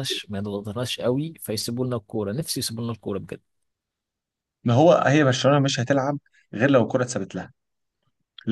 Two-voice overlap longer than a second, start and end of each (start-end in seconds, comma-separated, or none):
none